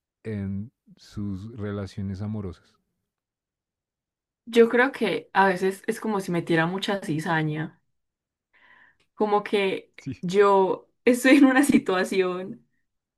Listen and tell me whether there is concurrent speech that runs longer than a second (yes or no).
no